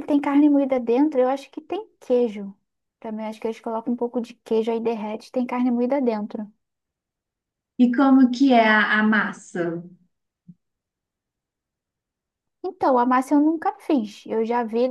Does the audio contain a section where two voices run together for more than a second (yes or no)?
no